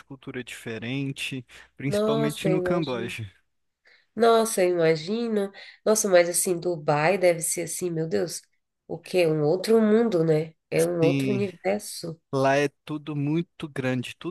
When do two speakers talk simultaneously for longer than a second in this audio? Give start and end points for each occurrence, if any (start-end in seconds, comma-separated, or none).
1.9-3.2